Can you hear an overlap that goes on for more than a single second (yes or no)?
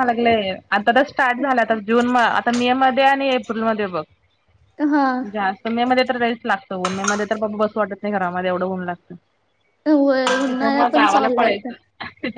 yes